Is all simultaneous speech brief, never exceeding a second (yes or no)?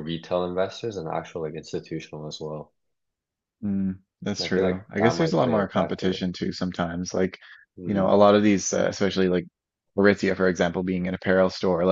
no